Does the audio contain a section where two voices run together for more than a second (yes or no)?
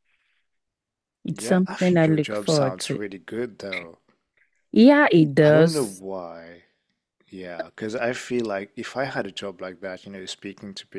yes